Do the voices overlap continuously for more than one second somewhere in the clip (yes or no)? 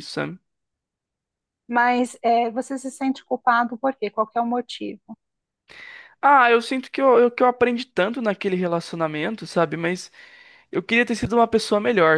no